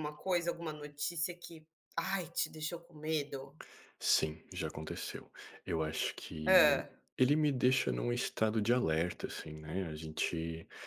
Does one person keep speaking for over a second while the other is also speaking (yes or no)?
no